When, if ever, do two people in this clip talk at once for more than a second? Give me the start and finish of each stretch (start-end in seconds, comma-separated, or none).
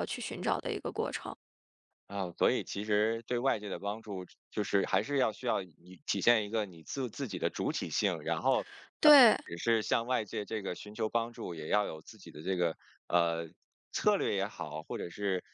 none